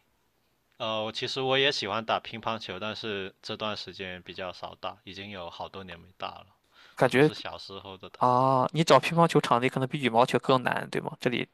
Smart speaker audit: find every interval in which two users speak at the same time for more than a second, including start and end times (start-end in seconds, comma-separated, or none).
none